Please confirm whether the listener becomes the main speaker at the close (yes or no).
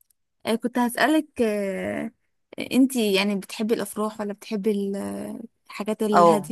yes